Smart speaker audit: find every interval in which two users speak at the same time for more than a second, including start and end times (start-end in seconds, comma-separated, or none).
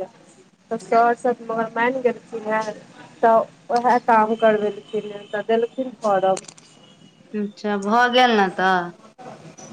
none